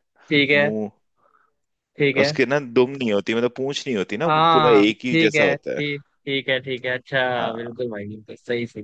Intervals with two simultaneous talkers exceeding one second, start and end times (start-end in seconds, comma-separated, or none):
4.2-5.8